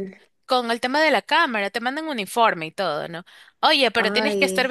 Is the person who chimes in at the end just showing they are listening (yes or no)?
yes